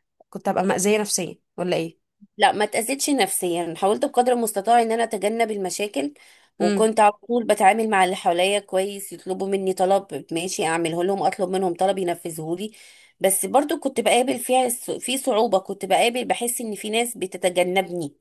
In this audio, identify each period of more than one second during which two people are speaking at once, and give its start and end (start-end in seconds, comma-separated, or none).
none